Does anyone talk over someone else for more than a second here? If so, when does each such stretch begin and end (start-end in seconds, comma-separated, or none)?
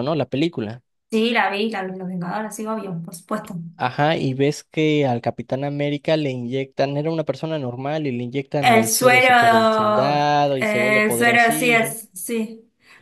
8.6-12.0